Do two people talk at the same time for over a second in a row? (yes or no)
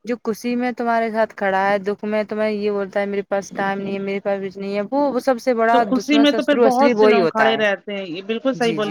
yes